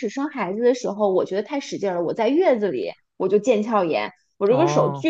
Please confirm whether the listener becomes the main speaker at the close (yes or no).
no